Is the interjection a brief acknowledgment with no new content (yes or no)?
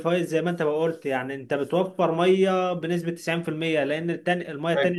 no